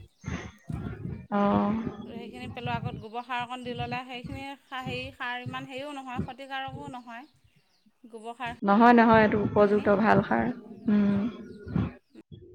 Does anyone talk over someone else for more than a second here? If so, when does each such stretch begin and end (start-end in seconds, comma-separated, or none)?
none